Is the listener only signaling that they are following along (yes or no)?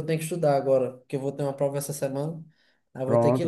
no